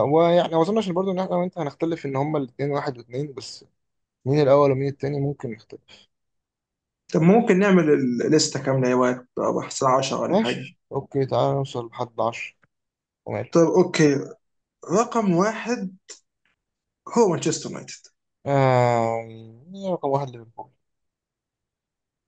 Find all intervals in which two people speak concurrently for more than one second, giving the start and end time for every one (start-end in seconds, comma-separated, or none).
none